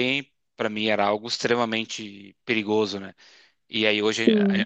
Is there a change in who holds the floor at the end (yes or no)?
no